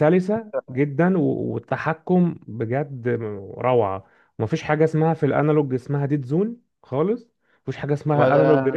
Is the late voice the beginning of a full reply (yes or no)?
yes